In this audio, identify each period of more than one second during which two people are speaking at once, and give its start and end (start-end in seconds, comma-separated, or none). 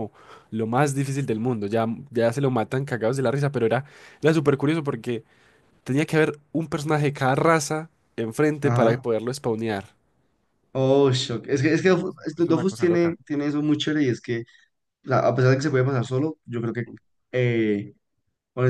11.8-13.2